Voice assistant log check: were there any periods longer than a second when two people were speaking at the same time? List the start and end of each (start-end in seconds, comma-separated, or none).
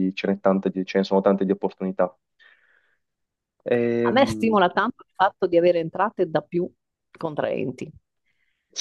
none